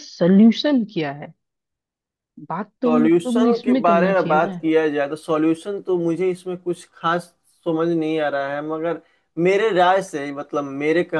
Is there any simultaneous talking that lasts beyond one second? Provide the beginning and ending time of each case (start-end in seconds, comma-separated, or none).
2.8-4.6